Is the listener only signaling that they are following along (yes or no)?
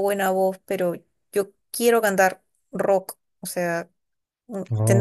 yes